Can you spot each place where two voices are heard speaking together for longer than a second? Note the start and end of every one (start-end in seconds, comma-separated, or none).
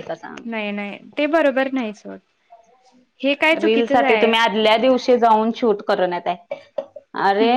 none